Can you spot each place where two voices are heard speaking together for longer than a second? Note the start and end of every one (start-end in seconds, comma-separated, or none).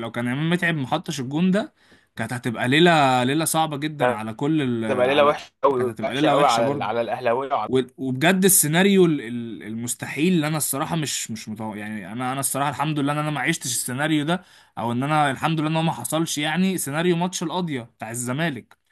4.9-7.0